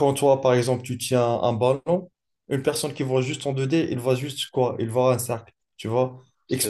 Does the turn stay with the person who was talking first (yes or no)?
yes